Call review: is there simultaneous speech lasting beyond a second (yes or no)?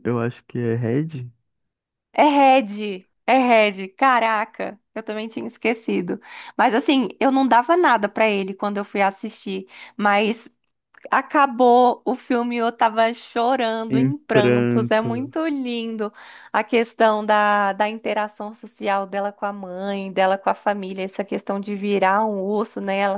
yes